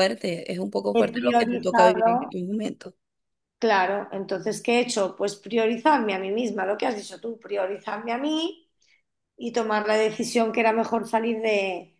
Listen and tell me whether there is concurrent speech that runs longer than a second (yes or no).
yes